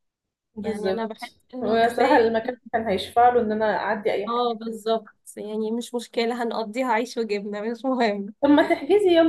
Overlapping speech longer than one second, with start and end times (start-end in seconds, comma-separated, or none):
0.6-2.3